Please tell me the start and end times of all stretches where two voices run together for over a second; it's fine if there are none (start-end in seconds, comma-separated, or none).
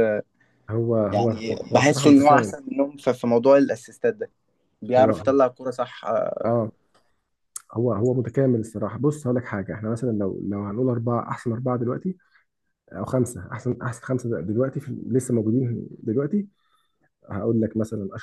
1.1-2.5